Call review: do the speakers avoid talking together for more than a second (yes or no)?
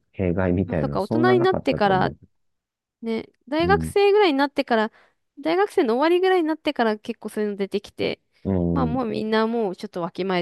no